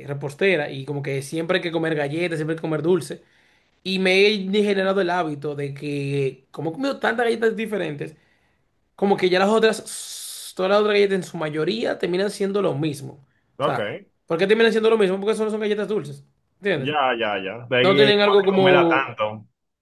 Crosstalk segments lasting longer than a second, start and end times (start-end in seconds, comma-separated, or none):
17.8-19.1